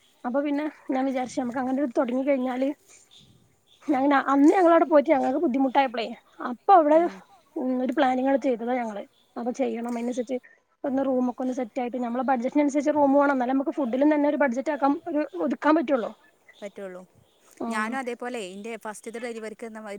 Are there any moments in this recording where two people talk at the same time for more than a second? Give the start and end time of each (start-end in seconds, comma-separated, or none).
none